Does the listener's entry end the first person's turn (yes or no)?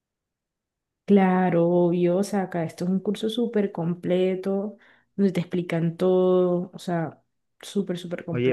yes